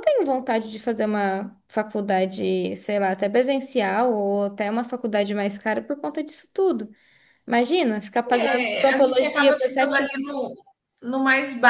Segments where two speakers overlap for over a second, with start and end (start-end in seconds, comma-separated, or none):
8.3-10.0